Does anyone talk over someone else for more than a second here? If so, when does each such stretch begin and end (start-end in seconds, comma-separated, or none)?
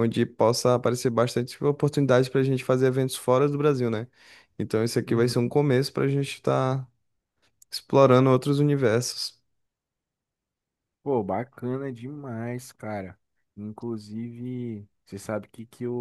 none